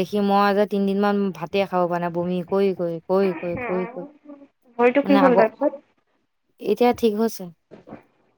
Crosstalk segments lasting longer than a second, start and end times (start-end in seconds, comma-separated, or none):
3.5-5.5